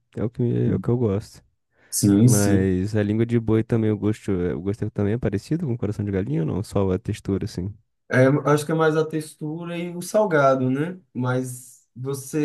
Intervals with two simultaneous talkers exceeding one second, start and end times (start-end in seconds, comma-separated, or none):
none